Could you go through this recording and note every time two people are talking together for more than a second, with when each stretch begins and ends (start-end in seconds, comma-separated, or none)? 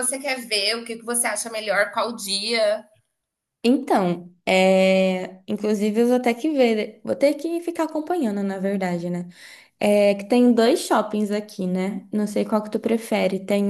none